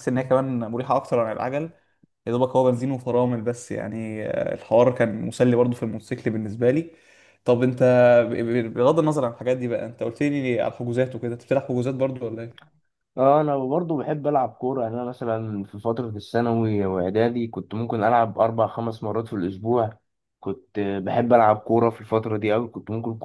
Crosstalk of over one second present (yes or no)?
no